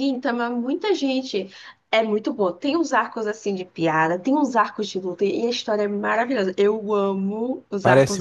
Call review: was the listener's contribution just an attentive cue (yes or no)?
no